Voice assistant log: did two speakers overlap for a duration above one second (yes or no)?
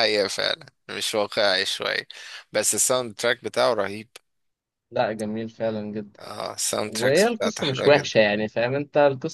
yes